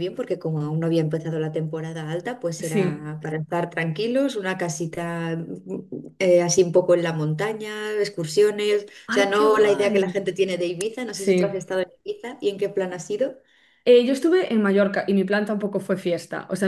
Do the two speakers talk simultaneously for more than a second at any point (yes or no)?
yes